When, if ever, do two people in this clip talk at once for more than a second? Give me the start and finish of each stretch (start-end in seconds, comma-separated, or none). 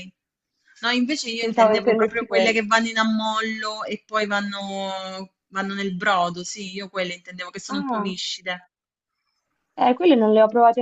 1.4-2.7